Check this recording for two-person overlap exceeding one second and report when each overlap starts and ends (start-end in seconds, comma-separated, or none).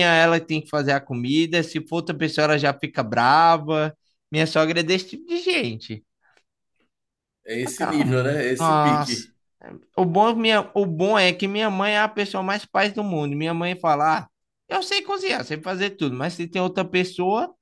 7.6-9.3